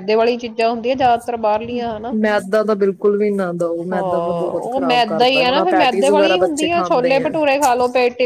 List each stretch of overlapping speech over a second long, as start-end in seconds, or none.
4.6-7.2